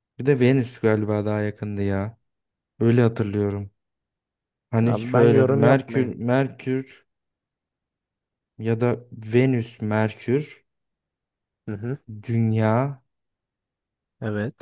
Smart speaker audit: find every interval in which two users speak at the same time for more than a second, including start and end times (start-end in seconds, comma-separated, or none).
4.8-6.1